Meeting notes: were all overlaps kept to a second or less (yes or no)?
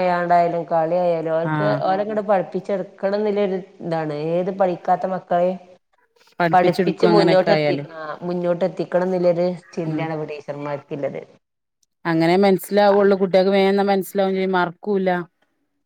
no